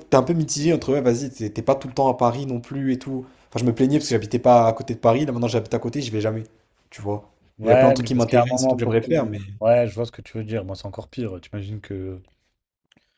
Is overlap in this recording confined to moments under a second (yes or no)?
no